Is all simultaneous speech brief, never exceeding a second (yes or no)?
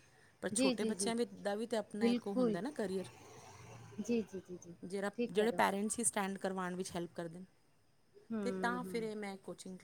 yes